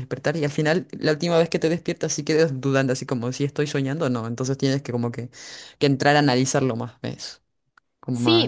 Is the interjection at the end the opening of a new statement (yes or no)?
yes